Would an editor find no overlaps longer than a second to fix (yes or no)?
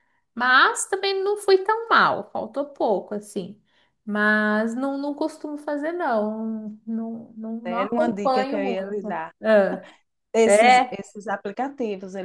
no